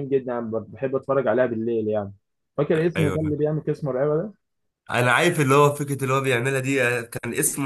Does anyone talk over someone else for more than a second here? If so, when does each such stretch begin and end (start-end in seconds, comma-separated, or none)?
none